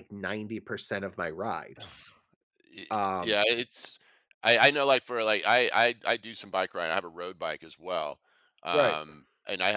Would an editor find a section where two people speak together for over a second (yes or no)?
no